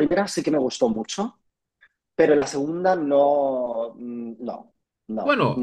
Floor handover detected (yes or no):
yes